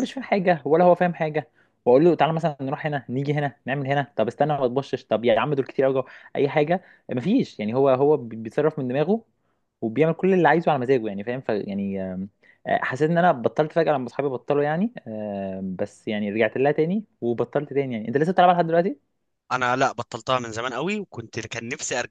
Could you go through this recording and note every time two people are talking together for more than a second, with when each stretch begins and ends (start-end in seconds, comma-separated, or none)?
none